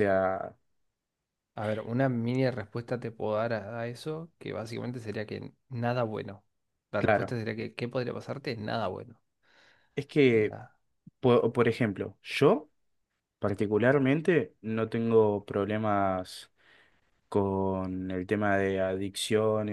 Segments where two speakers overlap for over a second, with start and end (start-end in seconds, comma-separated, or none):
none